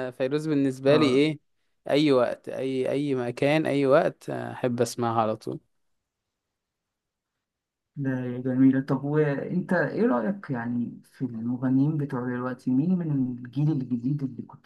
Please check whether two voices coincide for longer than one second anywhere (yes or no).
no